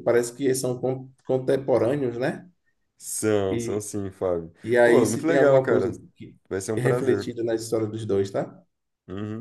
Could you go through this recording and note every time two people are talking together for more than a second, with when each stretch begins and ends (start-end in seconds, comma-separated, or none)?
4.6-5.9